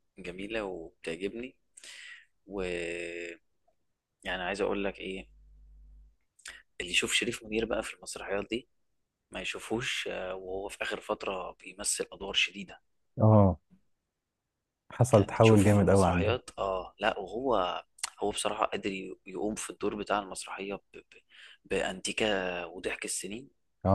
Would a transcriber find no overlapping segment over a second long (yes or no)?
no